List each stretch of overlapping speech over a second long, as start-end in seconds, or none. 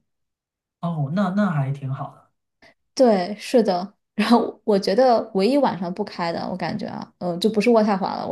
none